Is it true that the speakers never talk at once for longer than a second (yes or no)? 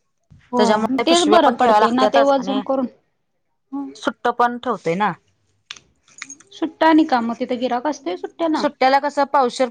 no